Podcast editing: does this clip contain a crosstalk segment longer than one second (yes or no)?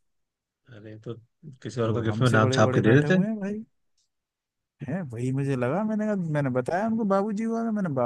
yes